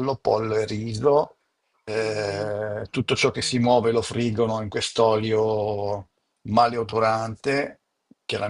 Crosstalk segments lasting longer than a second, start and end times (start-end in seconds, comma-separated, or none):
2.0-4.2